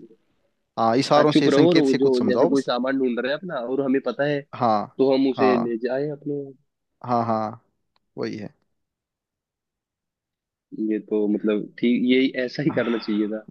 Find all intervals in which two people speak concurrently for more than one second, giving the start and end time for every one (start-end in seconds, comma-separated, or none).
1.1-2.7